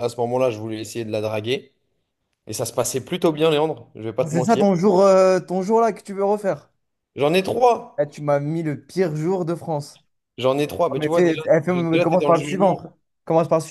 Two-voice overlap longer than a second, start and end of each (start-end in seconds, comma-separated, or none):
10.9-12.9